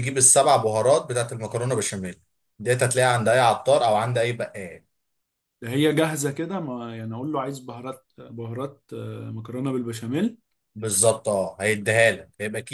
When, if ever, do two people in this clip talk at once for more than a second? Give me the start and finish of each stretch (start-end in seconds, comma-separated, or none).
none